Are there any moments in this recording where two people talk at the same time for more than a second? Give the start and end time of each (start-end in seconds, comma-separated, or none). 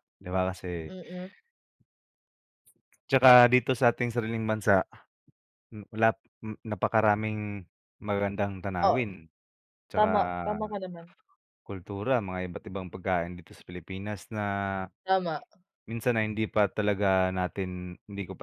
none